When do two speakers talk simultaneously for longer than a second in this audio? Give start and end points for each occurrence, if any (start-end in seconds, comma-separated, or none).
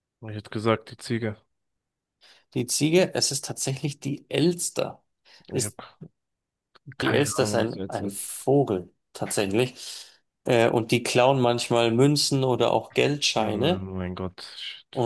7.0-8.3